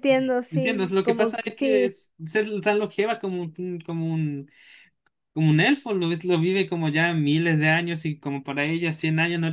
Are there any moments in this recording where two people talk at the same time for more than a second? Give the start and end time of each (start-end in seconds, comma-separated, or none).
0.5-1.9